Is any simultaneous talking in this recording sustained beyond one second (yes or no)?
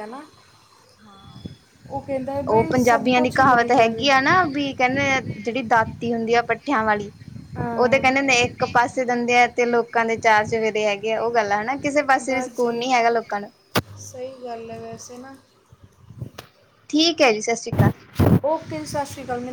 yes